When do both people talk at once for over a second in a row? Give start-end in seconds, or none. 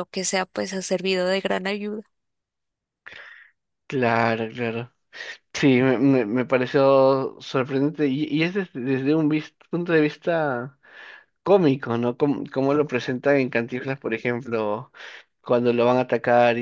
none